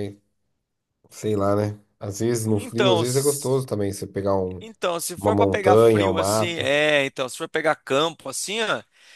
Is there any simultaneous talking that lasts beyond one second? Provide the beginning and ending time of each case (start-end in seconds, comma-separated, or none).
5.2-6.7